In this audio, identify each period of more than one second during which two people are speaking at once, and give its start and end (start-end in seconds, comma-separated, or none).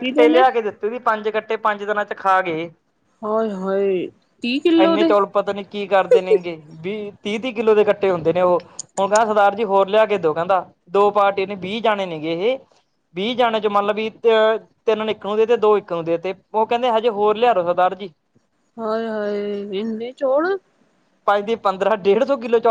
none